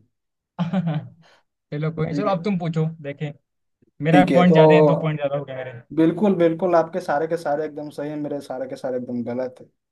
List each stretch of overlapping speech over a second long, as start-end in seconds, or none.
none